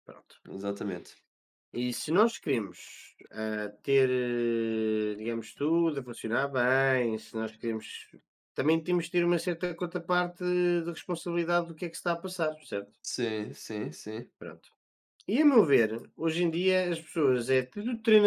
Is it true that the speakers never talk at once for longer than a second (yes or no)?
yes